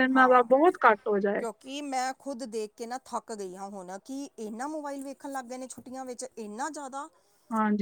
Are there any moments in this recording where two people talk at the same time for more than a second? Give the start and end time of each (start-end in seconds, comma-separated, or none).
none